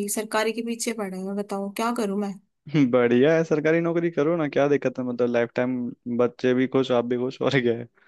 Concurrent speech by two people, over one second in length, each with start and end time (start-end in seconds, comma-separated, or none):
none